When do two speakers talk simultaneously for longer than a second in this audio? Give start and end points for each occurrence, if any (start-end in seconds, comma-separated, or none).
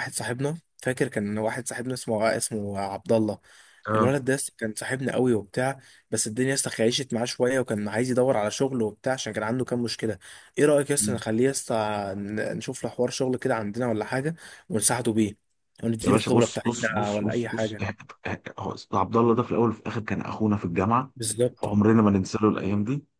16.0-17.9